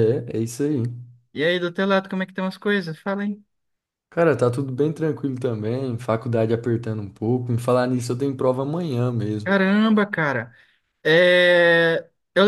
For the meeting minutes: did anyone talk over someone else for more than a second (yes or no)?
no